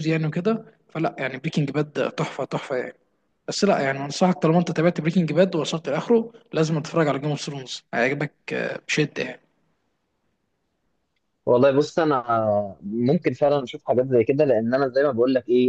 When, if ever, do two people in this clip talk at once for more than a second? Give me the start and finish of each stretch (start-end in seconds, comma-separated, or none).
none